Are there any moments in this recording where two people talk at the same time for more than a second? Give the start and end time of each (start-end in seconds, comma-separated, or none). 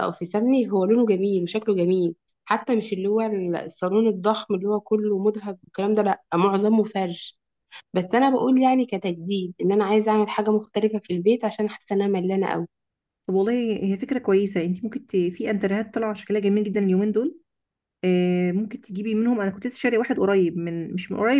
none